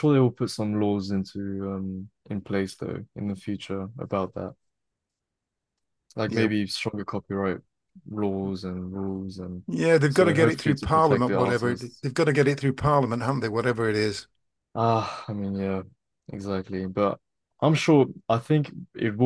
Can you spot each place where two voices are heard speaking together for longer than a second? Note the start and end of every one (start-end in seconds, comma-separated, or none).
10.1-12.1